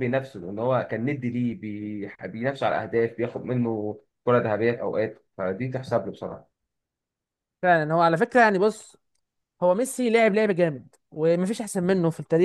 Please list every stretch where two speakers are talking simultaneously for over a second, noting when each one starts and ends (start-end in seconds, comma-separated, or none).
none